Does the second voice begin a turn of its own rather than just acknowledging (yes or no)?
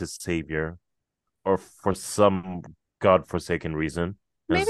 yes